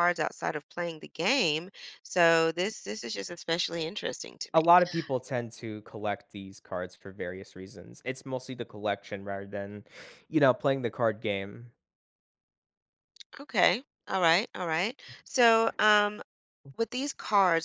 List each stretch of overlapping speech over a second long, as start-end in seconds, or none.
none